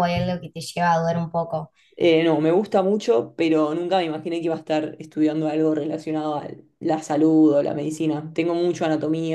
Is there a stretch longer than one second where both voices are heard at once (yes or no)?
no